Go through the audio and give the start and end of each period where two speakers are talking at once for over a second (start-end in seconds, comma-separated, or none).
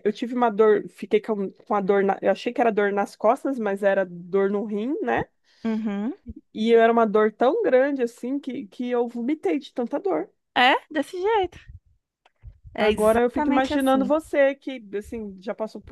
12.8-14.1